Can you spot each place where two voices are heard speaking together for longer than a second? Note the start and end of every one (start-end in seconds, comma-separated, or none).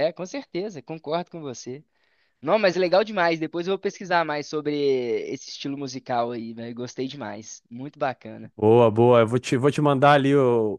none